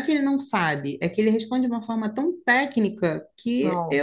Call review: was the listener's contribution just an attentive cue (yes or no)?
yes